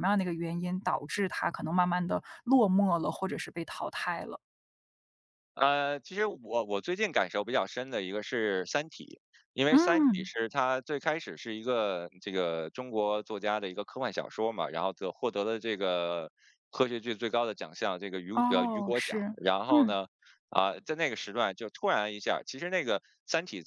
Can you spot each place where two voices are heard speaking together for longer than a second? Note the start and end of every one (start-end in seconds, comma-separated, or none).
18.3-19.9